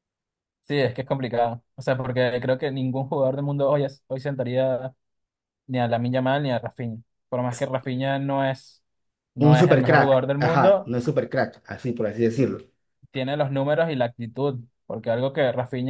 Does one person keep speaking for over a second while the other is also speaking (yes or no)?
yes